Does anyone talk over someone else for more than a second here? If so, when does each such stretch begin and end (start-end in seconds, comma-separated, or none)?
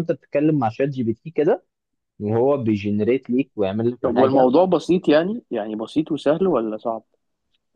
none